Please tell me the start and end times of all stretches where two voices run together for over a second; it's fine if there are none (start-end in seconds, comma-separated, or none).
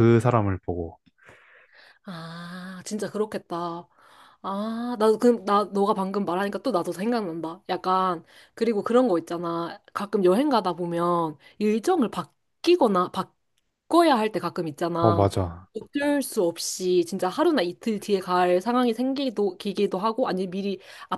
none